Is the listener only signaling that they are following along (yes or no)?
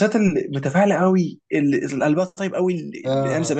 yes